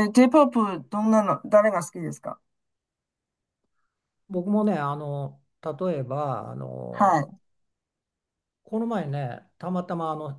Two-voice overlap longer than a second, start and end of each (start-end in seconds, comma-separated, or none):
none